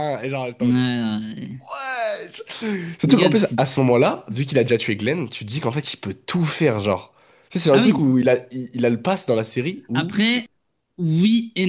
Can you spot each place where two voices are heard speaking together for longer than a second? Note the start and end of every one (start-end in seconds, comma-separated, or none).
none